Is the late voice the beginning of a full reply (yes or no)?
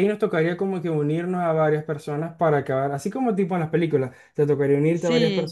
no